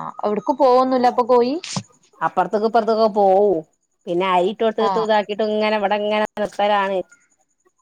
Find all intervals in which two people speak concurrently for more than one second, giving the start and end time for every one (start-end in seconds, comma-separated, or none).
none